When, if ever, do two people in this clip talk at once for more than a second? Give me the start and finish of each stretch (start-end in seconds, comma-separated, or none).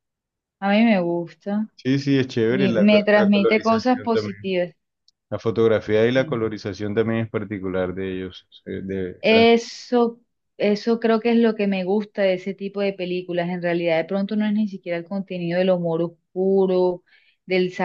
2.5-4.5